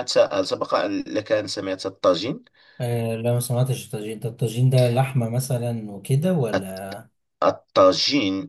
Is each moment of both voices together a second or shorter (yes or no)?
yes